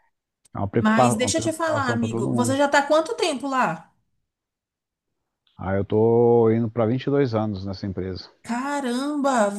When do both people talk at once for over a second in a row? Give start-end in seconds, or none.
0.8-2.6